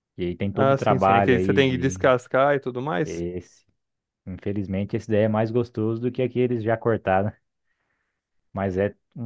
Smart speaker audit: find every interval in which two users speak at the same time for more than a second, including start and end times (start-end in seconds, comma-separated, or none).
0.5-2.1